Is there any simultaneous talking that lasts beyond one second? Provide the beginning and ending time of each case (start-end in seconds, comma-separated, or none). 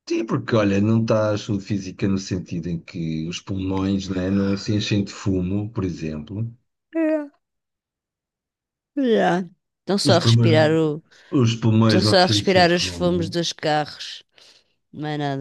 11.8-13.2